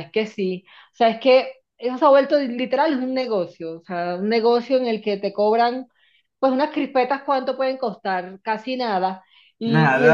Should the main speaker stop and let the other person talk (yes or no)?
no